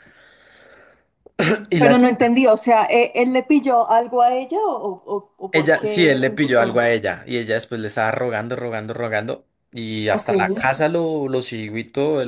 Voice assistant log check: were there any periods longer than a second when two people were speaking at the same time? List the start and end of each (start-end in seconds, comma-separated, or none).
5.5-6.8